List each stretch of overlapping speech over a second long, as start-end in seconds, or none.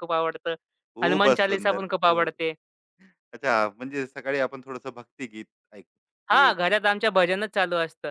1.0-2.3